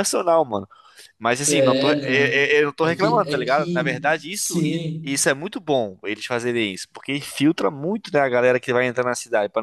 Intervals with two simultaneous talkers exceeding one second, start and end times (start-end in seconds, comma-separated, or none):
1.5-5.2